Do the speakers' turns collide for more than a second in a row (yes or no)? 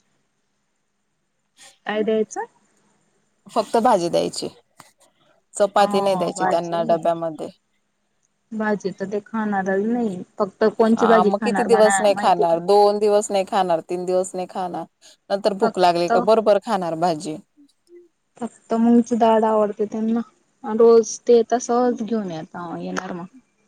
yes